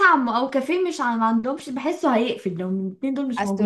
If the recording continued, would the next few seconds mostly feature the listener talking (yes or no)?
yes